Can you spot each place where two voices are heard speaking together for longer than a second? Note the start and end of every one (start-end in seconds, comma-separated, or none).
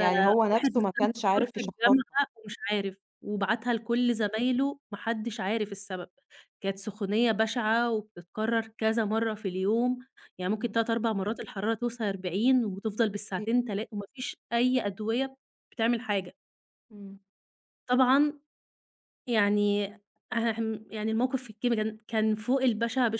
0.5-2.2